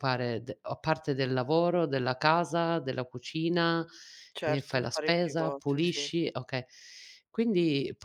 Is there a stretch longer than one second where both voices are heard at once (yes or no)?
yes